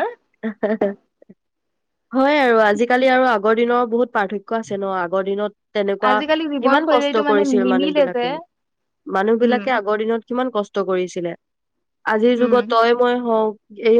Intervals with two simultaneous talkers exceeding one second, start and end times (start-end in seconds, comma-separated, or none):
6.6-8.2